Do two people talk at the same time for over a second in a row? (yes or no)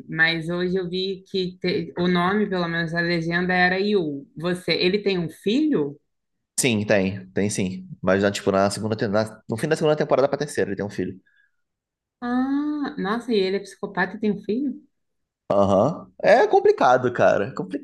no